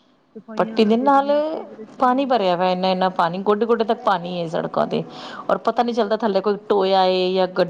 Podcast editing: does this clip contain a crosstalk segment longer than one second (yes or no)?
no